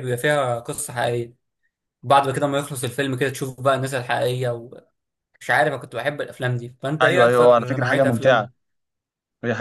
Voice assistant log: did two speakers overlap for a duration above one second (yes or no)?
yes